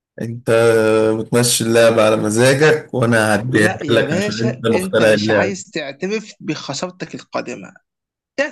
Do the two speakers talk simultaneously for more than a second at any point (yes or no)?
yes